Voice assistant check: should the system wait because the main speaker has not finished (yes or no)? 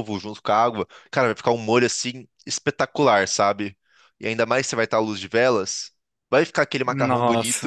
yes